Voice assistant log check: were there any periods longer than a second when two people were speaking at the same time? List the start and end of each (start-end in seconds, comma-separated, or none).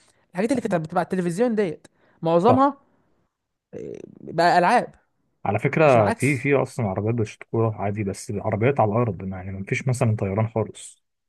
none